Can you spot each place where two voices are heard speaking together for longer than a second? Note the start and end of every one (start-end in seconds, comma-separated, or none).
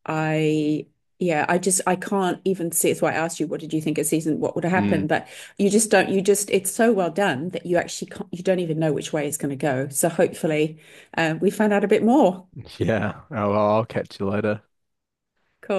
none